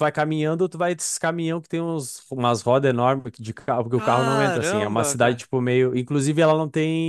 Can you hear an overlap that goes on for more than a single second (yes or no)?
yes